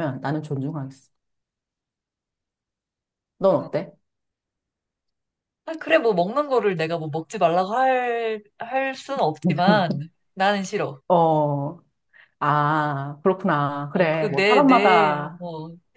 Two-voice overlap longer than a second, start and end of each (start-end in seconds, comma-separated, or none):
13.9-15.4